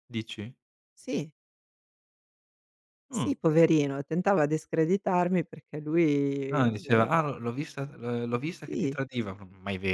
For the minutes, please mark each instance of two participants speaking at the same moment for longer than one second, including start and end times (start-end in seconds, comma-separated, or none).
none